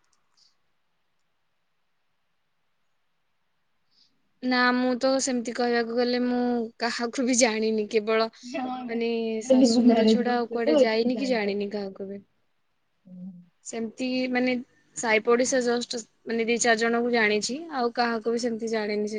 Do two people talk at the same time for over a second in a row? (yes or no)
yes